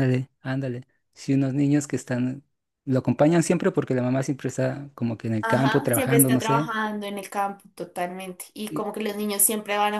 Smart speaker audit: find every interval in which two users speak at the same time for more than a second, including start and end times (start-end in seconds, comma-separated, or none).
5.4-6.7